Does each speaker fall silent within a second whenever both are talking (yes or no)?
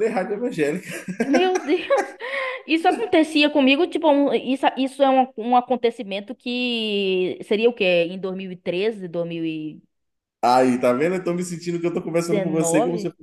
yes